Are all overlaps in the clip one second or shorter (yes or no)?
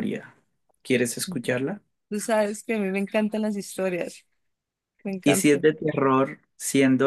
yes